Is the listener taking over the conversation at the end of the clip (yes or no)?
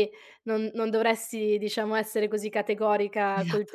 no